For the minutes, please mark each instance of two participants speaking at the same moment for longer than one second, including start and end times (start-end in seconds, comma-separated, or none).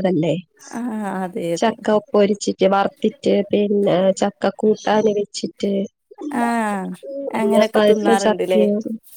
7.4-8.6